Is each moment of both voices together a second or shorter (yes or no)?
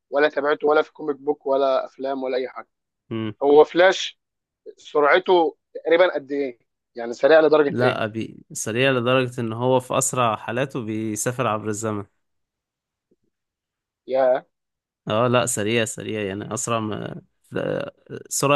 yes